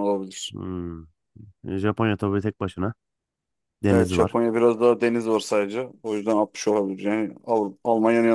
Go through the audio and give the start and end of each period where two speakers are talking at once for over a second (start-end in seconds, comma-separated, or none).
none